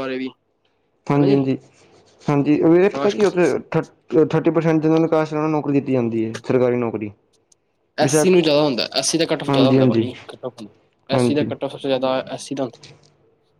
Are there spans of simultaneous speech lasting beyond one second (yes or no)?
no